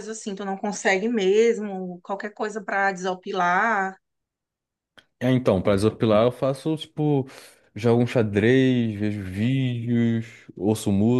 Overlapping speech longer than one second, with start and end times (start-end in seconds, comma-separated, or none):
none